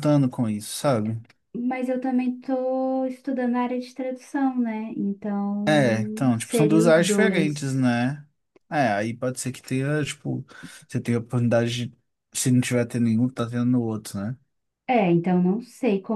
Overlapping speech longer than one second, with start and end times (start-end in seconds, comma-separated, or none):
5.7-7.8